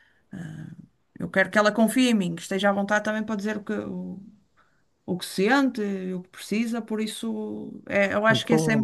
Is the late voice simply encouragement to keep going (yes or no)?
yes